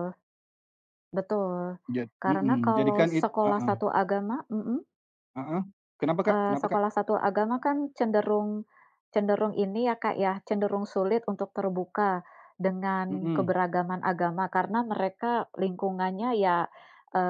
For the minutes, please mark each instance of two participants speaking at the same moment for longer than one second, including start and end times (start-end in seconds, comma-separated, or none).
2.2-3.7